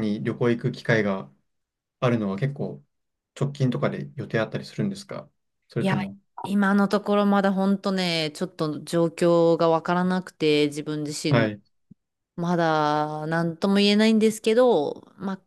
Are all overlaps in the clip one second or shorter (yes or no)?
yes